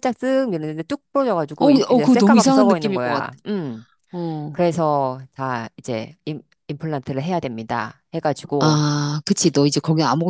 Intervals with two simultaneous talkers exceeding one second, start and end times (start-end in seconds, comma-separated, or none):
1.6-3.3